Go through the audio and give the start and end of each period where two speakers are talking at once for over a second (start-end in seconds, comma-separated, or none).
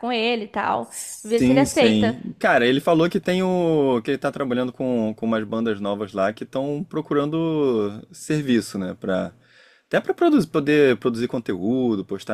0.8-2.2